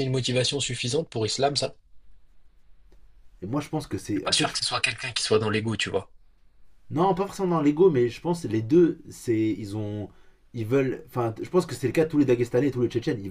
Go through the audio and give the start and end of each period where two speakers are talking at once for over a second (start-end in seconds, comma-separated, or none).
none